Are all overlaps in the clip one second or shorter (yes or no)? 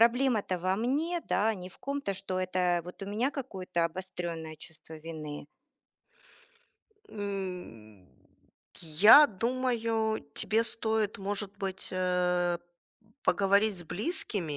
yes